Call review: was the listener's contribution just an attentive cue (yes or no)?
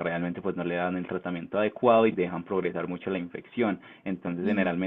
yes